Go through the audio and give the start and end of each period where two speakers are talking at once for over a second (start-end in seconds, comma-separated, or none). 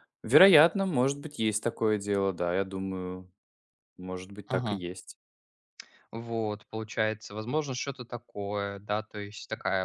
none